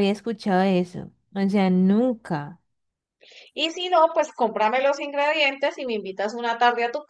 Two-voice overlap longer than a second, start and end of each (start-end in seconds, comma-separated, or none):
none